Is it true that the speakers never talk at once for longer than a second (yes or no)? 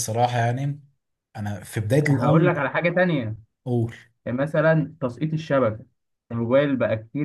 yes